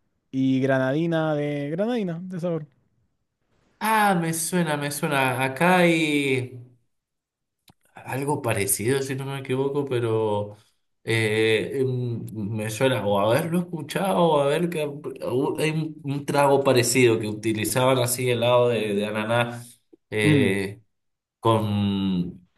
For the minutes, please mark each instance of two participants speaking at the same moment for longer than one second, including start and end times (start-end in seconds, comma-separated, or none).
none